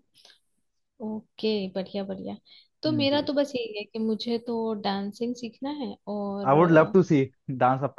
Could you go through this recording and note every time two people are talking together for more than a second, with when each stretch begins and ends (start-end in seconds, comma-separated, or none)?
none